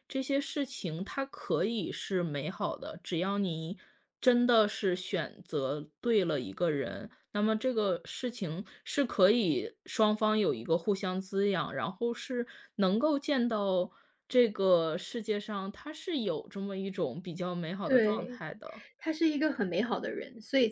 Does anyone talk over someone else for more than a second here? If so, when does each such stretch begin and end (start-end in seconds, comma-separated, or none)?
none